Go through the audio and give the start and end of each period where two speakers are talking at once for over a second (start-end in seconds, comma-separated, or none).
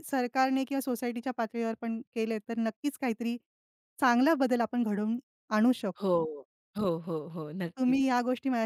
none